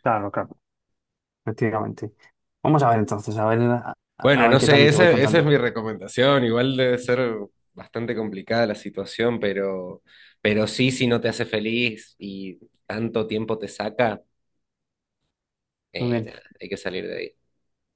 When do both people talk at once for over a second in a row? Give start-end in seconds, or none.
4.2-5.6